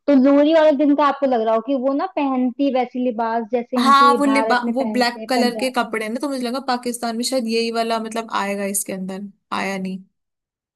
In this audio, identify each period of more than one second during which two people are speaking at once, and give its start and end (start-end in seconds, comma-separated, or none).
3.8-5.7